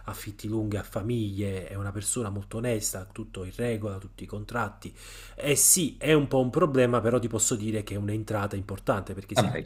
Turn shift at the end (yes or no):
no